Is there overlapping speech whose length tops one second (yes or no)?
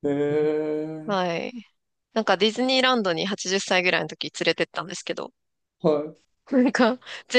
no